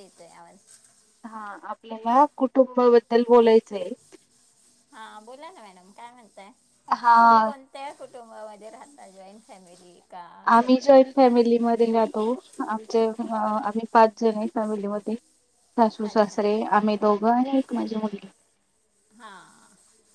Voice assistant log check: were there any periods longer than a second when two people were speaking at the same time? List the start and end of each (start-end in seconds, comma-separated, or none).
none